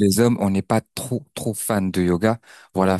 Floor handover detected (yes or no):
no